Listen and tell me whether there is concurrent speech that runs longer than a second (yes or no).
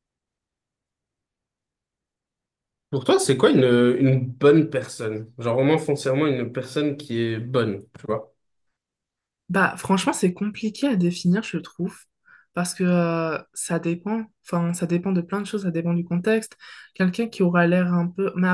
no